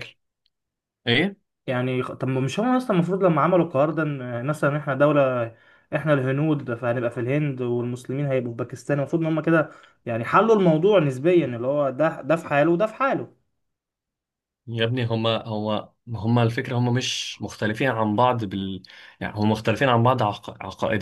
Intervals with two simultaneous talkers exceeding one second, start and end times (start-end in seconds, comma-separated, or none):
none